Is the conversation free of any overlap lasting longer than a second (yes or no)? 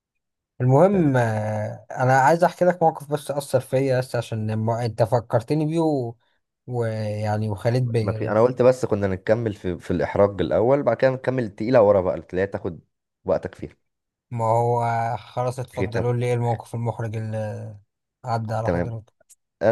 yes